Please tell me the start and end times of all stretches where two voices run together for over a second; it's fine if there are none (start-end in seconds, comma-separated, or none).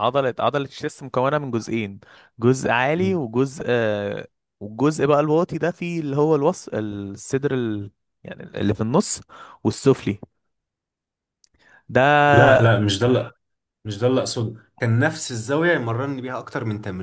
none